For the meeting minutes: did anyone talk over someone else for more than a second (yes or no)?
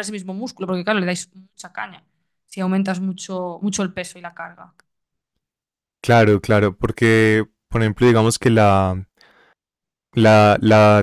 no